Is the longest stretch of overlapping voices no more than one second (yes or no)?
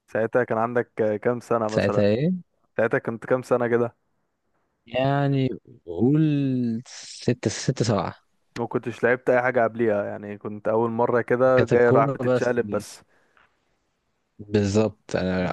no